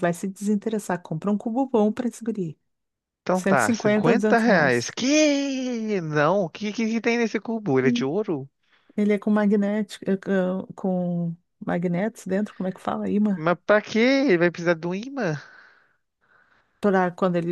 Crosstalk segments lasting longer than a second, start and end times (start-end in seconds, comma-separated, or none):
3.3-5.0